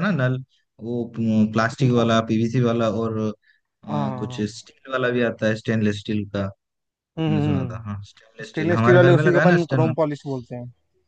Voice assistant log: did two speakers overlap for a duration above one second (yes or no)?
yes